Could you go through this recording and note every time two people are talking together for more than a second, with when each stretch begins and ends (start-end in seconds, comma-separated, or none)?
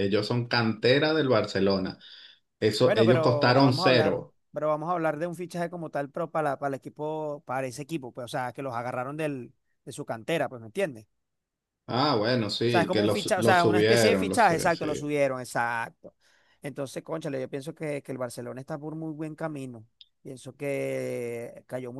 2.8-4.3, 12.7-15.1